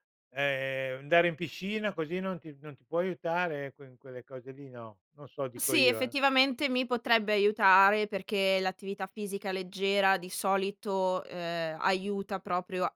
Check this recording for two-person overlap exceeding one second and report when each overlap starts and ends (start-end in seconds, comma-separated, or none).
none